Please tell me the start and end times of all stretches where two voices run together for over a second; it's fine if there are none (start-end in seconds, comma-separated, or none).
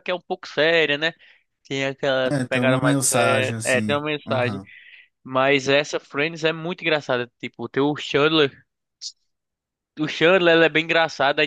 2.3-4.6